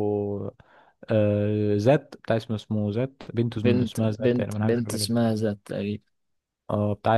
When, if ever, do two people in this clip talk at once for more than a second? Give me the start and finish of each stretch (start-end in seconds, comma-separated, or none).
3.6-5.1